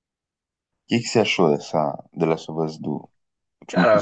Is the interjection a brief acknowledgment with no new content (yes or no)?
no